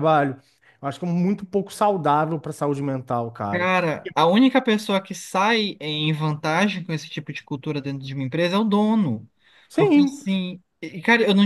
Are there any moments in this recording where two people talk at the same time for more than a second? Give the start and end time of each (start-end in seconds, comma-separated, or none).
none